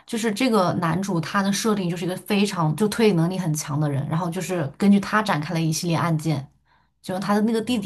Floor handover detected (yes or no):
no